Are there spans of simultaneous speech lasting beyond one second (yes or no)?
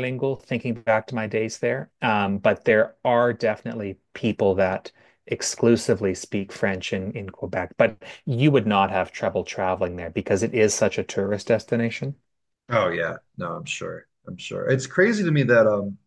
no